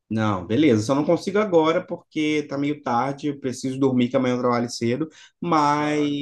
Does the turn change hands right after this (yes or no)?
no